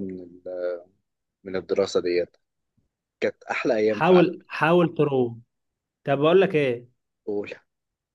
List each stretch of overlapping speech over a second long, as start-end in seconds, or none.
none